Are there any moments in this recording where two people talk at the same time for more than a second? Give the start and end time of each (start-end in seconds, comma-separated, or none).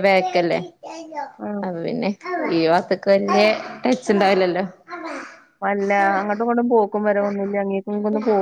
none